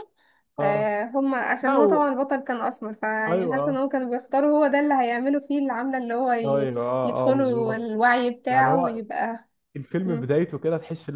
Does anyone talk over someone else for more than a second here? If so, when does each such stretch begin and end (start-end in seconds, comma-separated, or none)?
6.5-7.9